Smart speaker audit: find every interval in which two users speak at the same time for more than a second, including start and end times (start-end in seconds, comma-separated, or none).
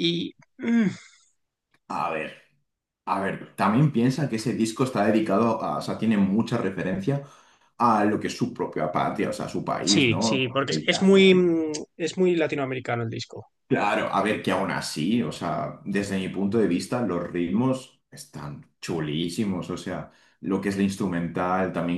9.8-11.3